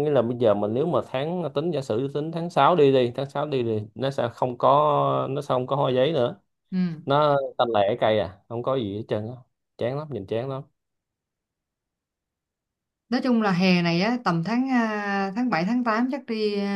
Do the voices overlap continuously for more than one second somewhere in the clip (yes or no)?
no